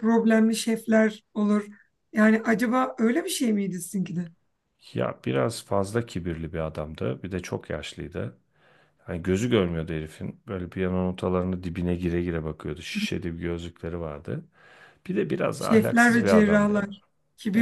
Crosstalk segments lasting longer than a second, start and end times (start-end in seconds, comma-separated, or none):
15.6-16.9